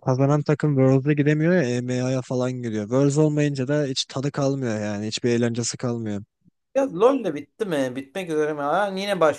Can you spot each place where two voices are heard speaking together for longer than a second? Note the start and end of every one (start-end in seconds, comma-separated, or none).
none